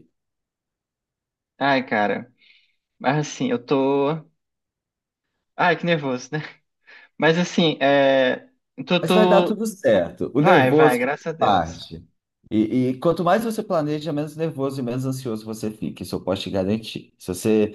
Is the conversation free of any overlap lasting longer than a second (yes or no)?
no